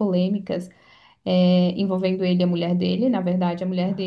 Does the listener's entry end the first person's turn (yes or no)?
no